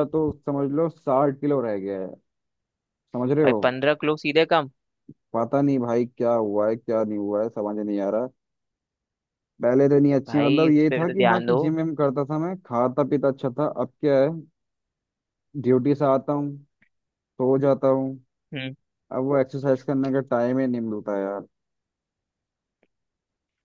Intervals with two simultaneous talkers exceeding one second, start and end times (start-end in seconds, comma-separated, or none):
10.3-11.6